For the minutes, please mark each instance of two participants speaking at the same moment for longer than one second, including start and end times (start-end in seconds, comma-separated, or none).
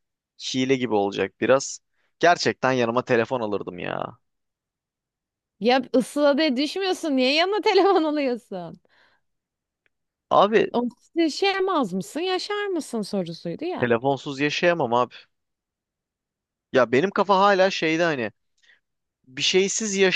none